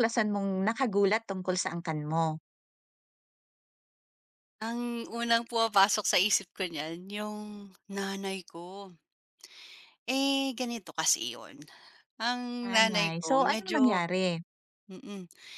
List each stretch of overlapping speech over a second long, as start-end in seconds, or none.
12.6-14.0